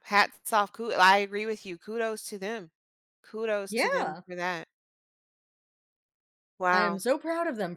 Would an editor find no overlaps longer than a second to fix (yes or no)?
yes